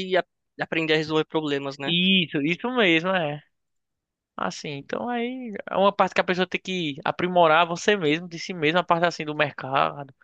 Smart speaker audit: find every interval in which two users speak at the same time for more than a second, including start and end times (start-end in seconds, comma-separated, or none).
none